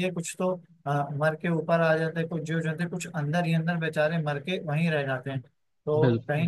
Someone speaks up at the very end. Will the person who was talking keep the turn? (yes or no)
yes